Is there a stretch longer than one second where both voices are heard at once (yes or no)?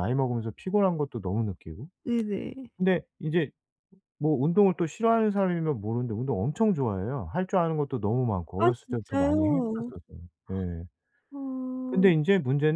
yes